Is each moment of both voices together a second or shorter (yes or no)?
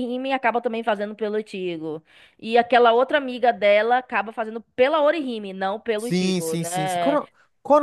no